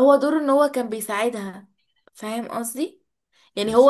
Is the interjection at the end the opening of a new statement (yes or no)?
no